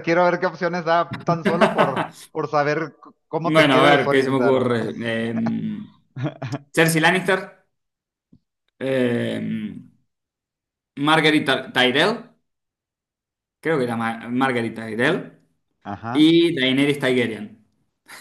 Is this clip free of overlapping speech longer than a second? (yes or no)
no